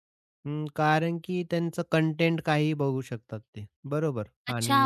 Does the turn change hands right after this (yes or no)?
yes